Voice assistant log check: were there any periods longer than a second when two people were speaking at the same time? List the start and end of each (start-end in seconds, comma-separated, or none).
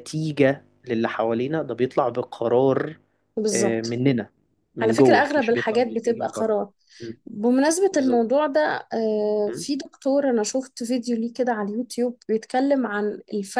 4.8-6.5